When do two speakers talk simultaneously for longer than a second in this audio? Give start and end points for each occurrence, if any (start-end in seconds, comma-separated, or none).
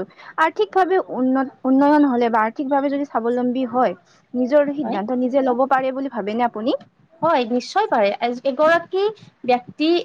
none